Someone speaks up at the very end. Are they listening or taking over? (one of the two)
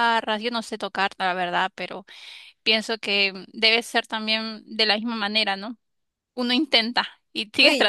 taking over